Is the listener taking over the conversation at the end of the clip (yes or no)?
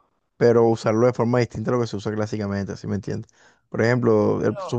no